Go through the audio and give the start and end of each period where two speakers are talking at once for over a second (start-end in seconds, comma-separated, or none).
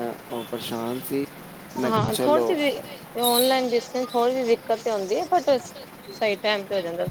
none